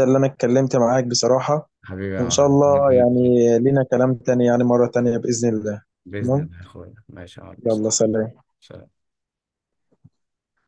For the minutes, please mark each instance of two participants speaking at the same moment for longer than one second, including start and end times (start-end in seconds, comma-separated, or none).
2.2-3.6